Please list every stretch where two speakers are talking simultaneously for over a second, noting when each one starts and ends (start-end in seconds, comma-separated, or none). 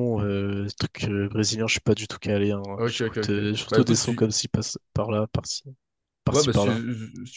2.8-4.2